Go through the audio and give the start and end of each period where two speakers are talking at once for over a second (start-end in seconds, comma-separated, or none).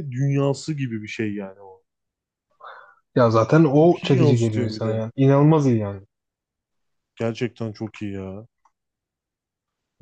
3.8-5.0